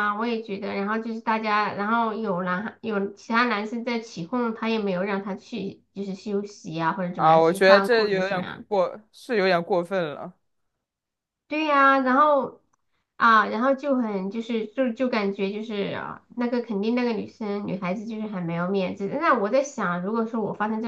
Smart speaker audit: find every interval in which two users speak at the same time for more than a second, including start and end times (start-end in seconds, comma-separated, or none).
7.1-8.7